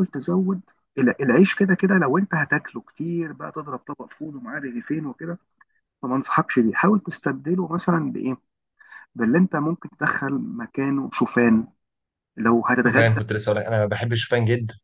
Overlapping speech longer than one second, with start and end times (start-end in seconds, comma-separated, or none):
none